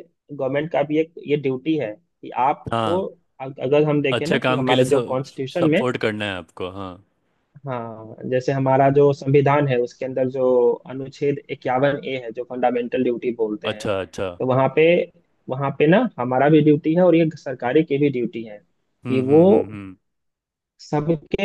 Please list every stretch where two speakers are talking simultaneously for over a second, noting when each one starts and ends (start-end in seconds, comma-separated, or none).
4.2-5.8